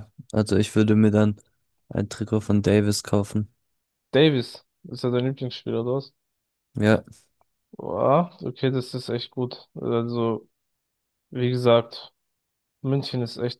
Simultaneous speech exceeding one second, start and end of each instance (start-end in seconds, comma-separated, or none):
none